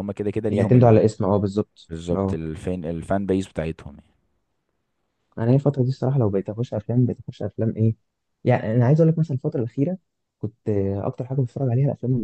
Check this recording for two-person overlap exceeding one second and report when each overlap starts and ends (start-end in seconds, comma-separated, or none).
none